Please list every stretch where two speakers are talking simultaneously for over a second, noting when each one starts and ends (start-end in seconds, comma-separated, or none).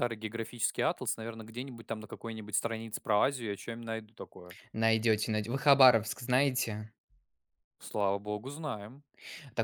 none